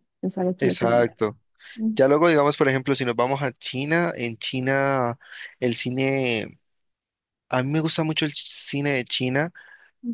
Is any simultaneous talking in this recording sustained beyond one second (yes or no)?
no